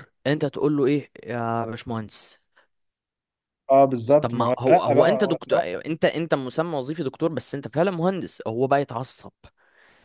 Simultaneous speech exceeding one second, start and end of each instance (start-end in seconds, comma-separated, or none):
4.2-5.8